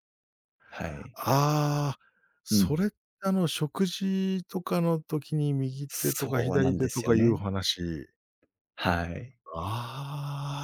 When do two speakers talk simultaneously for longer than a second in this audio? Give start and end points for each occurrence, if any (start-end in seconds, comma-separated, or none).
5.9-7.4